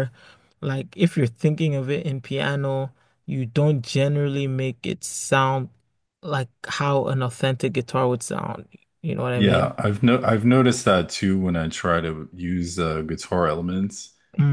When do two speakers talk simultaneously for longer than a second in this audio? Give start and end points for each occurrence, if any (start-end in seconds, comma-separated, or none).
none